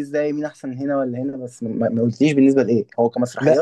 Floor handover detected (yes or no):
yes